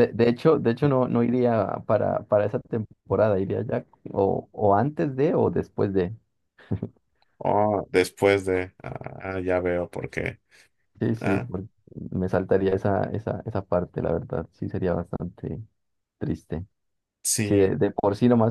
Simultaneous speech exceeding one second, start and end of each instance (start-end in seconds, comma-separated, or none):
none